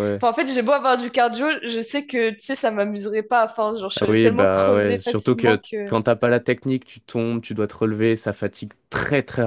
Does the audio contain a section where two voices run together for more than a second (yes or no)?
yes